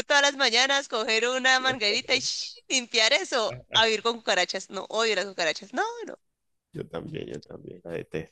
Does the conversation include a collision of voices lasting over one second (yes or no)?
no